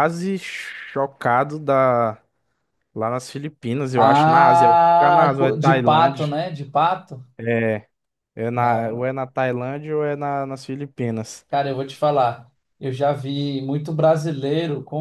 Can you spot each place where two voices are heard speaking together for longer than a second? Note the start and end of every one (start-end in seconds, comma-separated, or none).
4.0-6.3